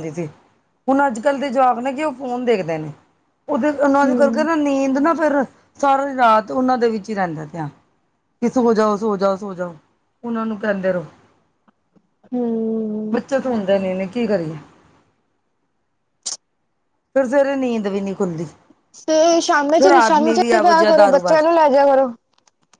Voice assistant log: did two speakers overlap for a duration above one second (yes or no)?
yes